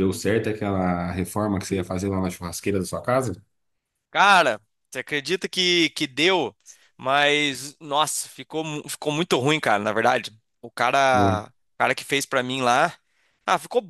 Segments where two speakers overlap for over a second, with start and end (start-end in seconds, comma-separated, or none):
none